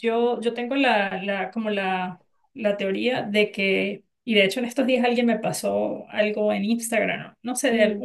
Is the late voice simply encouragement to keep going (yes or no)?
yes